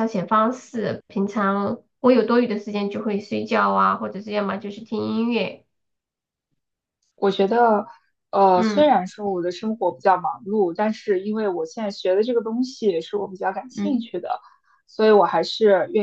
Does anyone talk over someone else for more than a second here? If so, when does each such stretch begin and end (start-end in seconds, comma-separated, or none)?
none